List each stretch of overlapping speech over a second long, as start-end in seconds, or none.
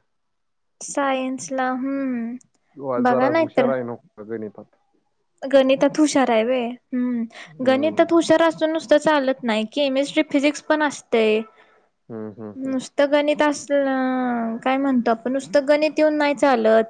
none